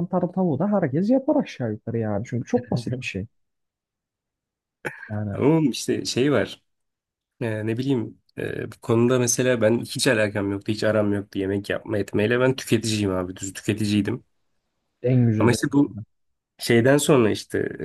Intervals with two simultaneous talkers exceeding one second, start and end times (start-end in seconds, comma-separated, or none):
none